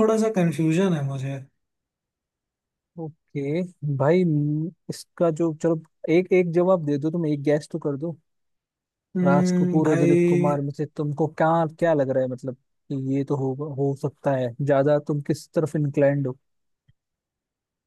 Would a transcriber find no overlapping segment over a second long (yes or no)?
no